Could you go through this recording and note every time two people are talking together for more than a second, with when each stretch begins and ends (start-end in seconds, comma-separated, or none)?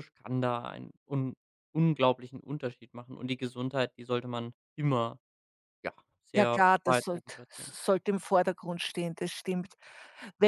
6.3-7.7